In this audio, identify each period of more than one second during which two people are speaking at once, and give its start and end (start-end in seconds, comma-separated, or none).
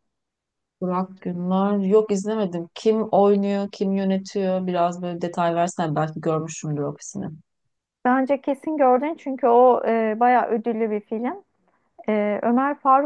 none